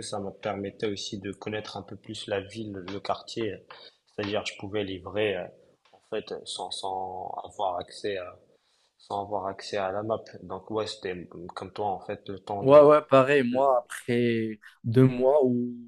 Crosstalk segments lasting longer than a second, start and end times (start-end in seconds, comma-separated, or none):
none